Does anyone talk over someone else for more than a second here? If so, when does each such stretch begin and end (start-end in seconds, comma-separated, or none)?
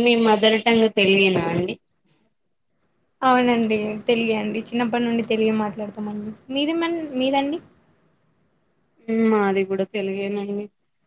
none